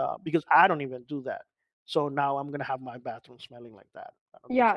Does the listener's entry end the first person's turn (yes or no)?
yes